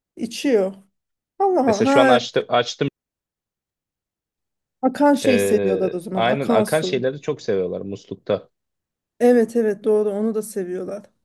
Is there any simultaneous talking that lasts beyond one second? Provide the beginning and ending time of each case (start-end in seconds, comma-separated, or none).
5.2-7.0